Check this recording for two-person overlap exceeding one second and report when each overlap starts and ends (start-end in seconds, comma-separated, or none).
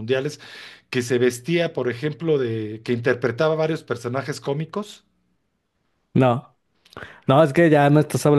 none